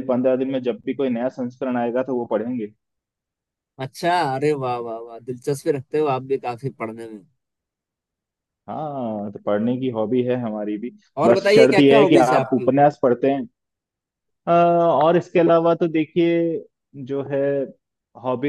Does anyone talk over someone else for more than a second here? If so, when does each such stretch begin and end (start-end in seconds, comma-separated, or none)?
11.2-12.7